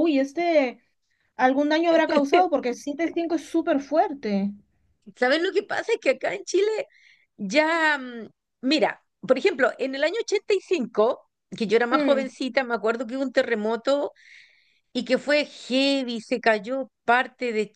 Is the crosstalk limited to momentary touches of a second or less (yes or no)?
yes